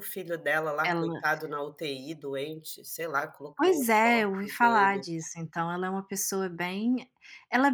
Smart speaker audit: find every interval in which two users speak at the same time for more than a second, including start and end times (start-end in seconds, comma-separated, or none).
3.6-5.1